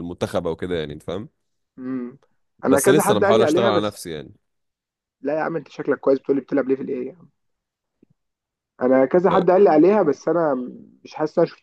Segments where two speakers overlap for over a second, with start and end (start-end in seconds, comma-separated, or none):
2.7-3.9